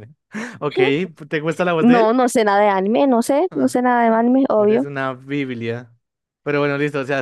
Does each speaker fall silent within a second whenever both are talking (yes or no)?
yes